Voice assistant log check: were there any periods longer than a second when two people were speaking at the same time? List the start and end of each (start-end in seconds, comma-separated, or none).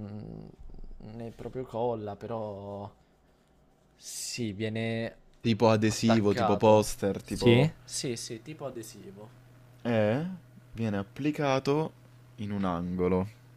5.9-7.7